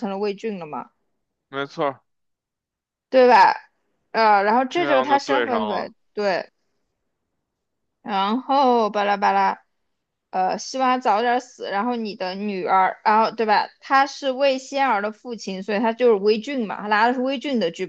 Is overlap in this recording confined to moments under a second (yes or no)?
no